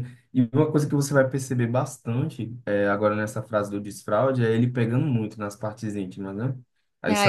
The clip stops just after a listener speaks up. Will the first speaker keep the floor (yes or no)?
no